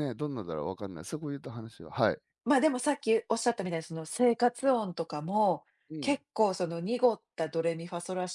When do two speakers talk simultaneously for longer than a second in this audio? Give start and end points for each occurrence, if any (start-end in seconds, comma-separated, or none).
none